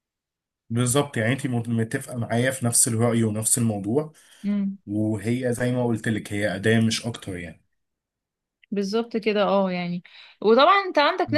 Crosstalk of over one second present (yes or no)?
no